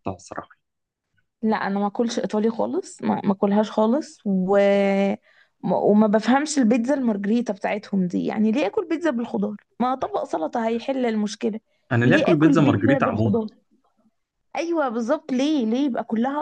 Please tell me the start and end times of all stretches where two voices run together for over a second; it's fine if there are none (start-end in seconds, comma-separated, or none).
12.0-13.4